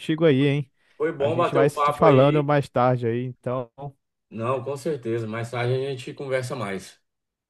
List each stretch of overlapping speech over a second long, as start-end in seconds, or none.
1.2-2.5